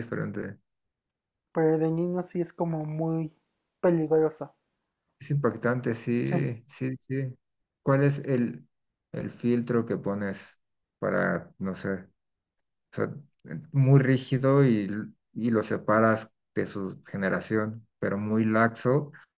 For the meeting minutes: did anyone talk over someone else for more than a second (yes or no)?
no